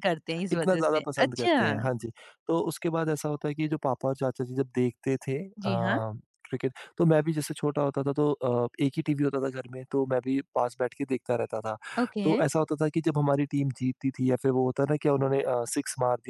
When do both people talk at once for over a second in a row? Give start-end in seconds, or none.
0.5-1.8